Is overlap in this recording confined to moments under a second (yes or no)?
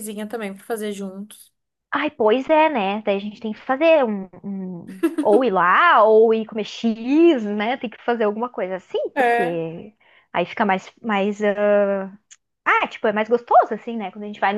yes